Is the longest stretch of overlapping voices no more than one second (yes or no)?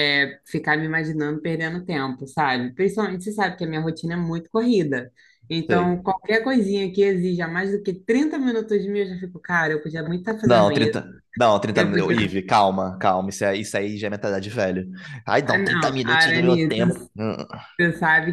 no